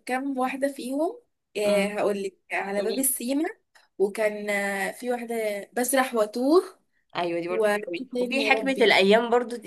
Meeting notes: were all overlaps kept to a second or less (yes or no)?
no